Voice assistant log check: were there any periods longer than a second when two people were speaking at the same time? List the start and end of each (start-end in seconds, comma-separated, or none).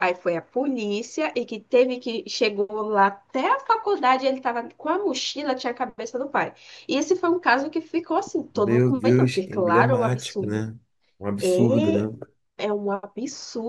8.5-10.6